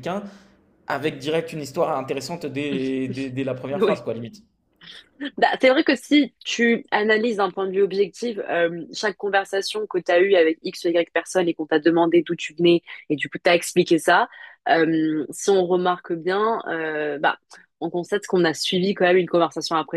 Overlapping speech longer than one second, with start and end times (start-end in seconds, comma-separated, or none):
none